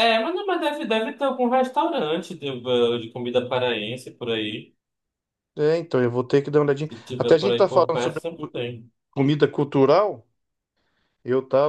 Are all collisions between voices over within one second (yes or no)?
no